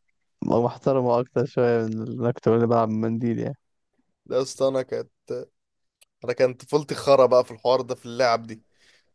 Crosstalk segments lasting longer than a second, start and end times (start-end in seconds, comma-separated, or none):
none